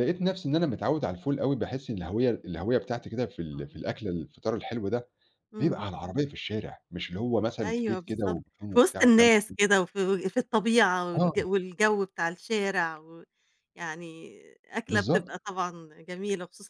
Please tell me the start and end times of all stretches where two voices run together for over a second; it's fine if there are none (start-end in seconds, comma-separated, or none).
7.6-9.5